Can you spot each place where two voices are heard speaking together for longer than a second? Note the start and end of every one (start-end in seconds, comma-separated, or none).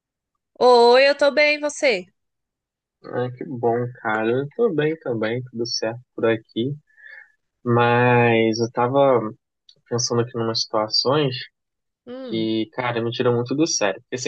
none